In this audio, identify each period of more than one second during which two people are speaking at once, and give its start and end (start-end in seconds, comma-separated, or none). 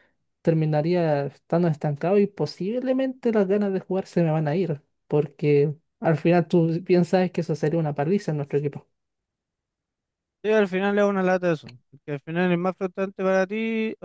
none